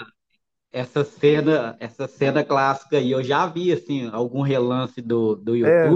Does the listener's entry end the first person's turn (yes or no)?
yes